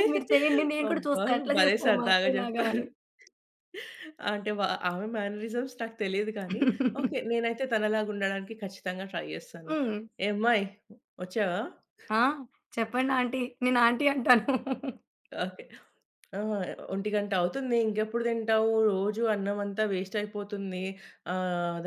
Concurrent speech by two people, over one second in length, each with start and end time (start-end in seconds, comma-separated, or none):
0.9-2.8